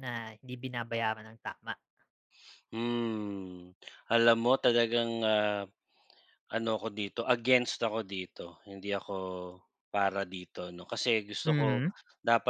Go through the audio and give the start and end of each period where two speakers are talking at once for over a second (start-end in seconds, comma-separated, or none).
none